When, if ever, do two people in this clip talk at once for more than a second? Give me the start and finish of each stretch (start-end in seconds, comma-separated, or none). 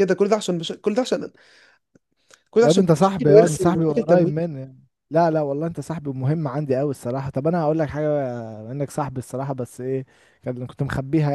2.6-4.4